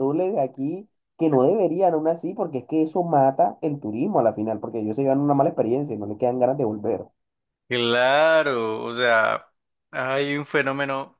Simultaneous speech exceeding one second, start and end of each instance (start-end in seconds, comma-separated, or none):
none